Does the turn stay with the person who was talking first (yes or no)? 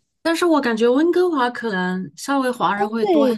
no